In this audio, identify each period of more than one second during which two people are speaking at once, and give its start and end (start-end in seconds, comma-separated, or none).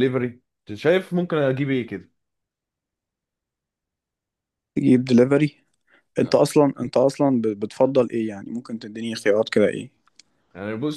none